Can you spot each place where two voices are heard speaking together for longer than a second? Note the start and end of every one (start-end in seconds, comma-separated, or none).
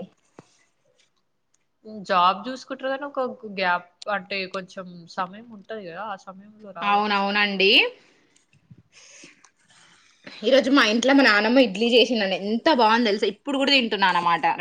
none